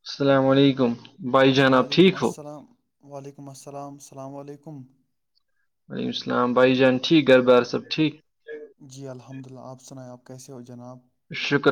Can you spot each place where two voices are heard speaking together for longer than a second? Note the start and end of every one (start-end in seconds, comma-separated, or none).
none